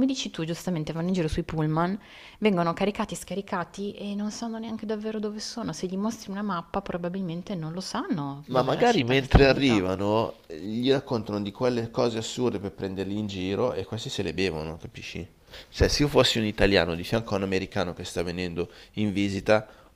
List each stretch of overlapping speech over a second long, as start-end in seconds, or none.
8.5-9.9